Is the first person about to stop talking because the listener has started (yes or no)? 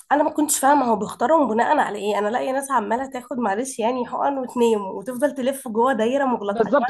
yes